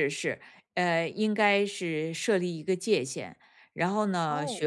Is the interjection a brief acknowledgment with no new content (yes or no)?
yes